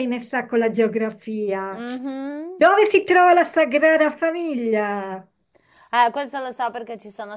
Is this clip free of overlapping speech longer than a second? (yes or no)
yes